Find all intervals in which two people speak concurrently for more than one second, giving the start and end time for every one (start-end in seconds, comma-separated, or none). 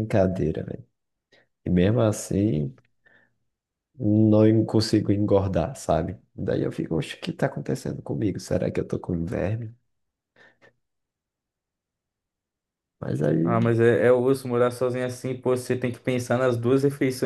none